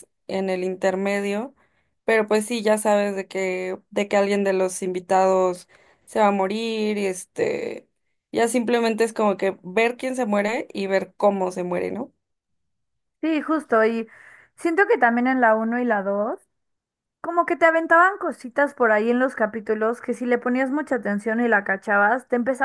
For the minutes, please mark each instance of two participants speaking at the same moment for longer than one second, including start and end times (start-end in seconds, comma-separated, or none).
none